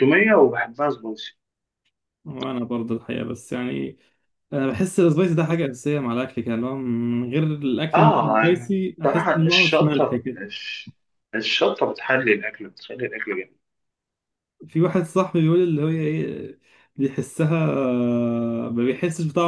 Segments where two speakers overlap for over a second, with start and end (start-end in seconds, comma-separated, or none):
7.9-10.4